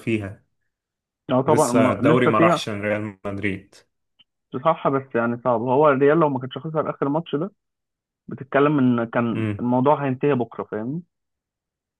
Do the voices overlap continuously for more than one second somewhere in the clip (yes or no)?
yes